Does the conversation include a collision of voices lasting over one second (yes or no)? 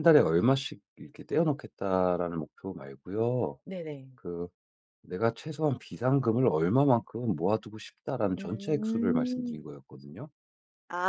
yes